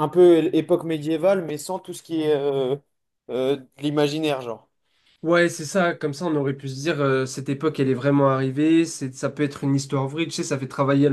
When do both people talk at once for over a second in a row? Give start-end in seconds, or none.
none